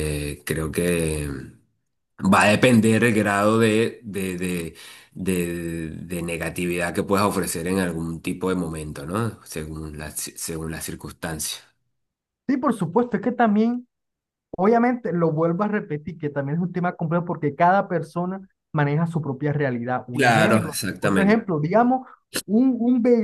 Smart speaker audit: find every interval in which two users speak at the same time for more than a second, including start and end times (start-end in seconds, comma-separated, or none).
20.1-21.4